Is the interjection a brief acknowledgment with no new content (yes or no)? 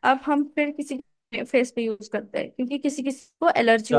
no